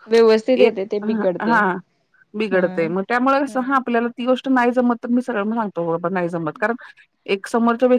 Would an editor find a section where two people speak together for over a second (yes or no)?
yes